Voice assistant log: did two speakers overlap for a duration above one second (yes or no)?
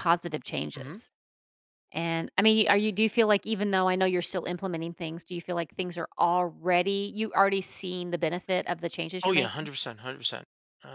no